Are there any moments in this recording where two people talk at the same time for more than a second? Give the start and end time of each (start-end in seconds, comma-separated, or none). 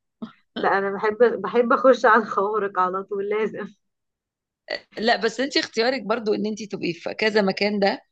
none